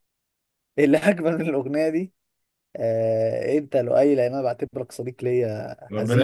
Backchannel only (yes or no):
no